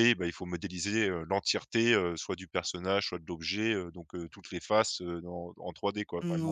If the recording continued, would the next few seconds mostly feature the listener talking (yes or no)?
yes